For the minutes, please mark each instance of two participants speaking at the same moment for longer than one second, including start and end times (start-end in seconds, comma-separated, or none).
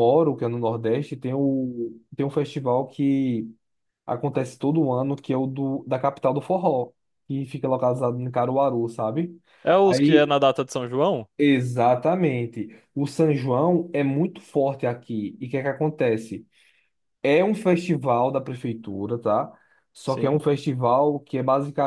none